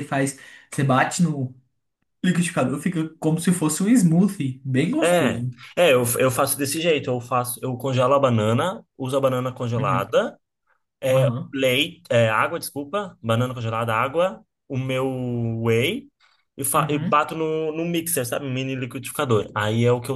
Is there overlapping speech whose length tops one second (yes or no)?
no